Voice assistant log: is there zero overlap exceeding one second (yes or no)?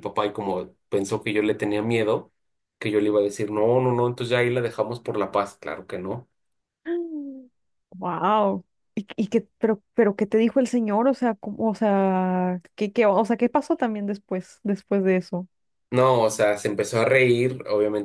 yes